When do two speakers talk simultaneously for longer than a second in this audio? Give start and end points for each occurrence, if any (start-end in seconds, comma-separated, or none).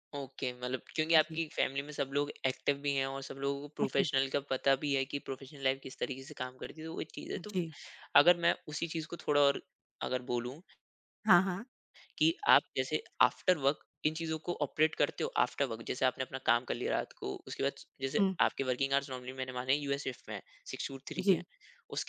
none